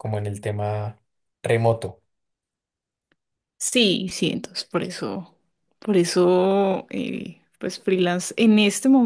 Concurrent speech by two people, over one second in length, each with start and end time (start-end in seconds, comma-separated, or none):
none